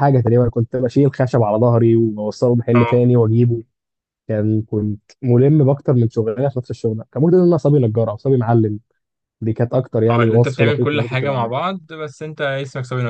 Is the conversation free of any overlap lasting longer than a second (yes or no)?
no